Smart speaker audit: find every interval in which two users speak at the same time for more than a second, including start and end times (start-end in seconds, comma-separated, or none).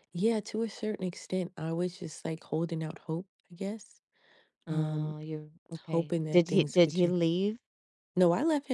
5.8-7.2